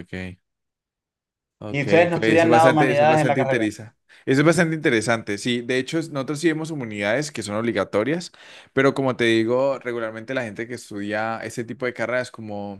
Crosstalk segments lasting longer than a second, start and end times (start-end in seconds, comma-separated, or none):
1.7-3.6